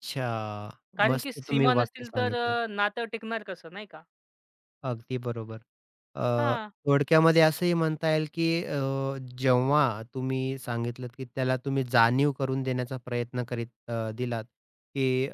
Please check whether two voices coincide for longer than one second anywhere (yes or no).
yes